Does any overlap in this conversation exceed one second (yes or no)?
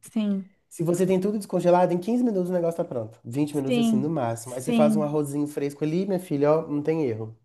yes